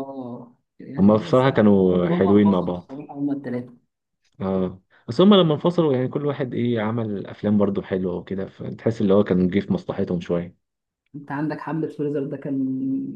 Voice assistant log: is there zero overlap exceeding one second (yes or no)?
no